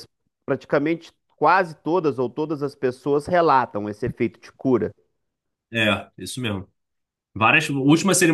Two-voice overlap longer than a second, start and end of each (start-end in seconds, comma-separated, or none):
none